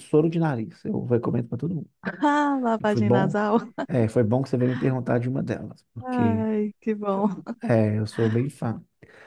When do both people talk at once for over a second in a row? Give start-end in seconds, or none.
none